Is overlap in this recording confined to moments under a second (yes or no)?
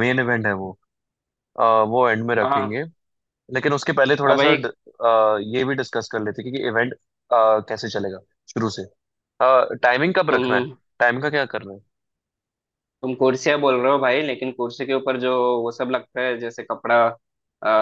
yes